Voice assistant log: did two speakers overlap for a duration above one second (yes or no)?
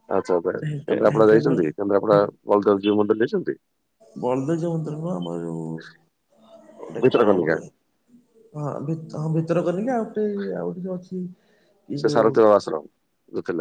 yes